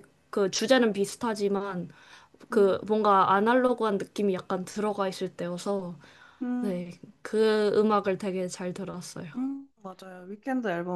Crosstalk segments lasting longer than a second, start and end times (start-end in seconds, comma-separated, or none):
none